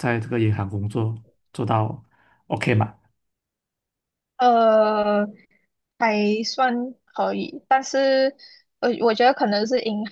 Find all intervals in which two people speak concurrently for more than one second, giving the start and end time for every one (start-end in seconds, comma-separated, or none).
none